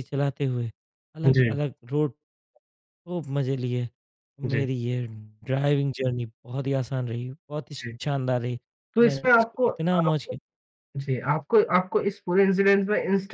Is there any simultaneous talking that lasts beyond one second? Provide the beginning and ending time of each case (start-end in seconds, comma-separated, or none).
9.0-10.4